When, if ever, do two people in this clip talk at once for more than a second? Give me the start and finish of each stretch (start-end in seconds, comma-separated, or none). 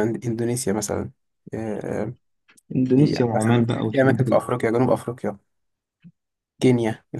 2.9-4.4